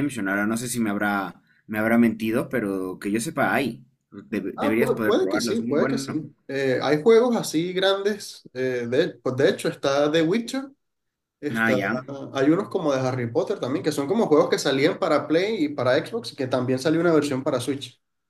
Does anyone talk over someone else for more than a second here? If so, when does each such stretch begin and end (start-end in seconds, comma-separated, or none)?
4.6-6.2